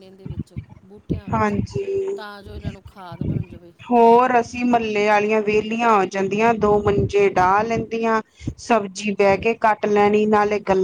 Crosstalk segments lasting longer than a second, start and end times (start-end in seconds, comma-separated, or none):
none